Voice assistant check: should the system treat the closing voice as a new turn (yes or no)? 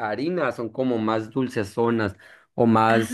no